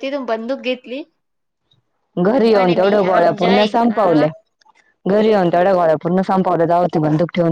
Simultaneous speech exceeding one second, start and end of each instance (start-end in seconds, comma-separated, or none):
2.3-4.2